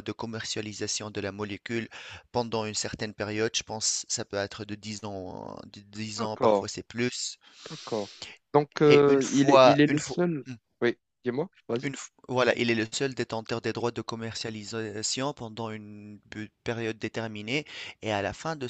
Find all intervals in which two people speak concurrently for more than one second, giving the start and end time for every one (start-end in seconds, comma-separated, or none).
8.9-10.2